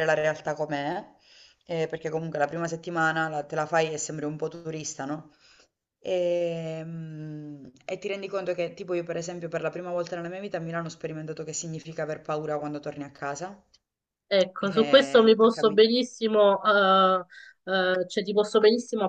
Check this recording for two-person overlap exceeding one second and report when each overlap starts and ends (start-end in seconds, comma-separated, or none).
14.6-15.8